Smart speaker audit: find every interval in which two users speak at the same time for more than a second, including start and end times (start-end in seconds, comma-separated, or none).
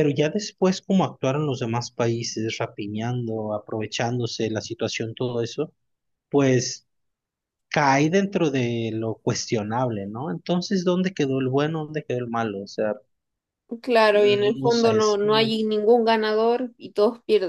14.1-15.5